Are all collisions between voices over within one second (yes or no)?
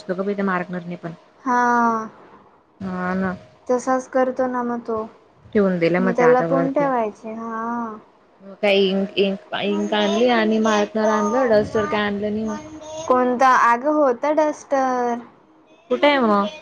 yes